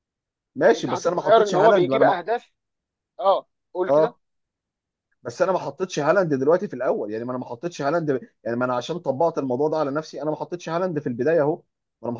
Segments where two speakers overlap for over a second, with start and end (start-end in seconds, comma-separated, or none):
0.8-2.2